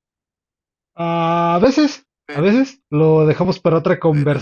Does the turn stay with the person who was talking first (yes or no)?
no